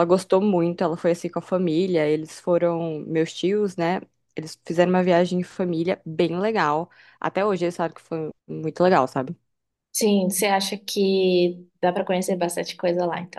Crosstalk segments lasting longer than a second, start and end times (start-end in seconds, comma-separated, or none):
none